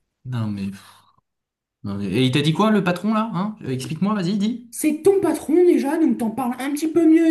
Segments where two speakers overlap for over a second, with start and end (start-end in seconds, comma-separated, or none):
none